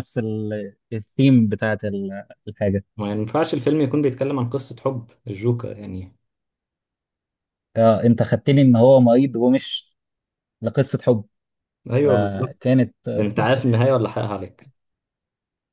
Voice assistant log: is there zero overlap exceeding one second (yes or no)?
yes